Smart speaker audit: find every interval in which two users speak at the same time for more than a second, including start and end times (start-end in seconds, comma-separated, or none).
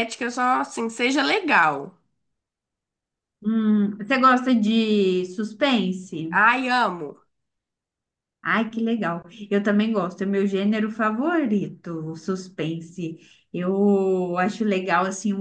none